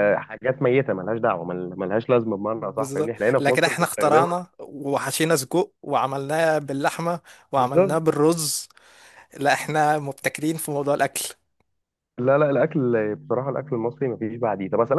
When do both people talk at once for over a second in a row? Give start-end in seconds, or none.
2.5-4.3